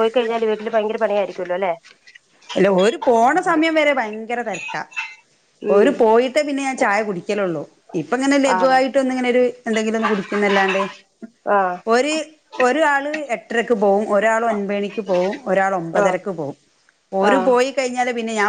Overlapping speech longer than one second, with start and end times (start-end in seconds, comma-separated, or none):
none